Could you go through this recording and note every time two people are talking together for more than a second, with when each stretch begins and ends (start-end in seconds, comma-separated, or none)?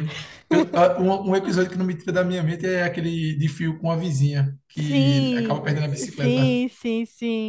4.7-6.6